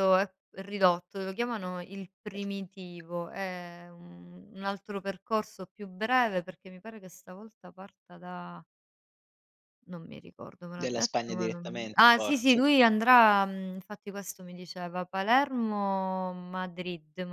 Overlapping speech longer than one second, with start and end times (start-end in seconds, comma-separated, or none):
10.7-12.6